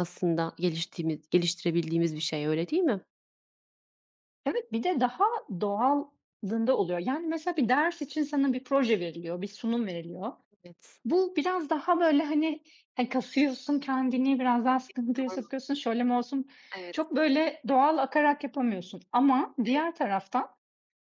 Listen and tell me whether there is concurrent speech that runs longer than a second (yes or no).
no